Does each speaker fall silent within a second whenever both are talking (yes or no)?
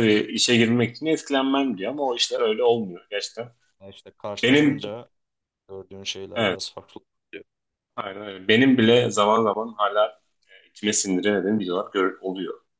yes